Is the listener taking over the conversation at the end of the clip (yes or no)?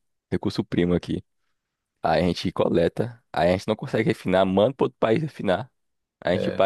no